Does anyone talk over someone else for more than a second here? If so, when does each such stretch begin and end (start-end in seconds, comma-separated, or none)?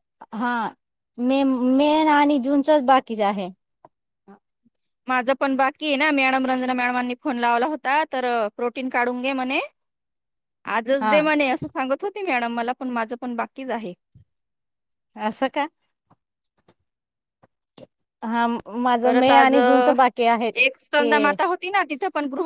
none